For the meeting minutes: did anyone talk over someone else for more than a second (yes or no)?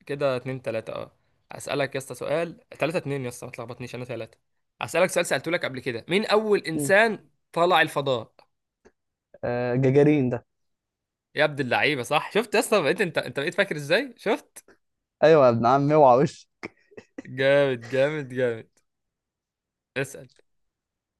no